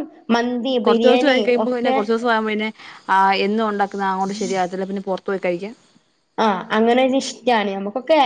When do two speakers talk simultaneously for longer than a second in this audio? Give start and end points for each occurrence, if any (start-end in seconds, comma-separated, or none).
none